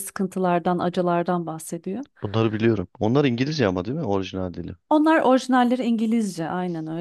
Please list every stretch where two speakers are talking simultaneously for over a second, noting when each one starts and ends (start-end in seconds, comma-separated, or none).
none